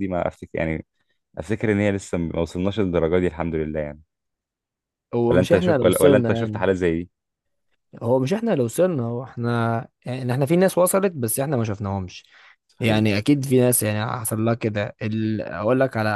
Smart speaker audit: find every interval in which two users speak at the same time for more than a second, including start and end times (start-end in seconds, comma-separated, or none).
5.3-6.7